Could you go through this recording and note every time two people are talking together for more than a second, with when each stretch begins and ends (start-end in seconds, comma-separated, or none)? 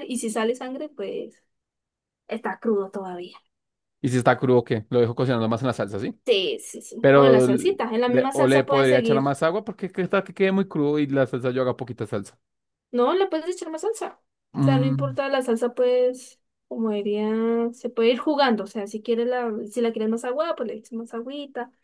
7.0-9.4